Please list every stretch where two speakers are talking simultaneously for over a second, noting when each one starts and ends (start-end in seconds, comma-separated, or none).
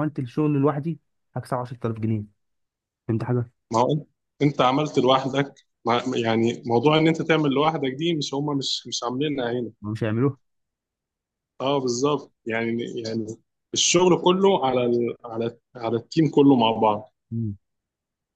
none